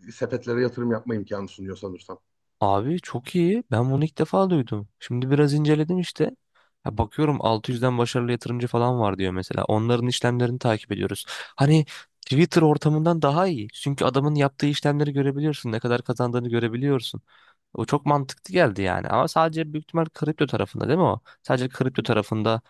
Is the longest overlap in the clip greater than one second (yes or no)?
no